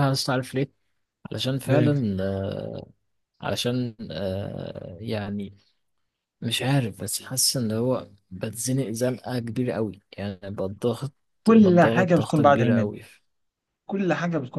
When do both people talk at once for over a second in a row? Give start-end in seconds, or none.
11.5-12.9